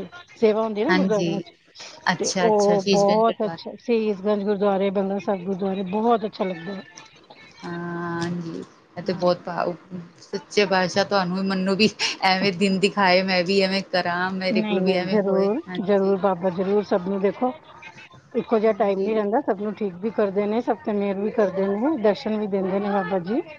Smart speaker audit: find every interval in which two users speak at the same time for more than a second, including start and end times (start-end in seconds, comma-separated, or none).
2.2-3.7, 14.5-16.1